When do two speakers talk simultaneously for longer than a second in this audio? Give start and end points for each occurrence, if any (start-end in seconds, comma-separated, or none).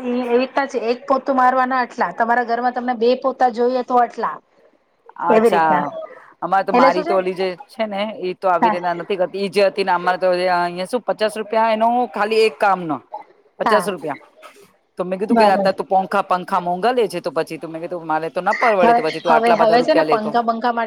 18.8-20.3